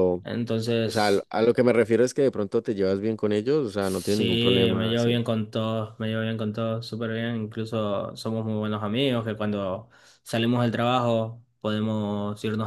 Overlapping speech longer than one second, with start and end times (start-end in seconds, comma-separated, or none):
3.8-5.1